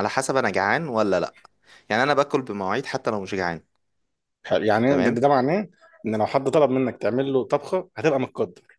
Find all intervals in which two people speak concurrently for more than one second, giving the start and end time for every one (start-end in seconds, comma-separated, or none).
none